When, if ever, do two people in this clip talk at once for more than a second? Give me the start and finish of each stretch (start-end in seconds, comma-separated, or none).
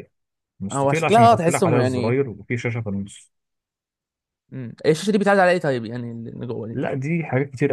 0.7-2.2